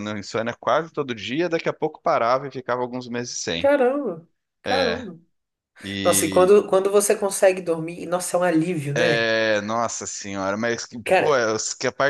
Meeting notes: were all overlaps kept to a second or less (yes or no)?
yes